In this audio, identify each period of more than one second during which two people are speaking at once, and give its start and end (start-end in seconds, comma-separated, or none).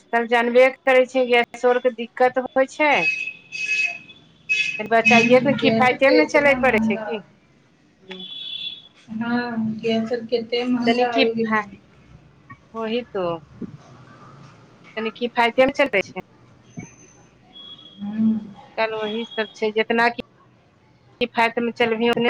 4.8-7.1